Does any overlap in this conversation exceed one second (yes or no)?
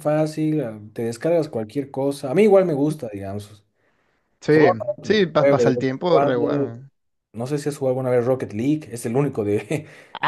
yes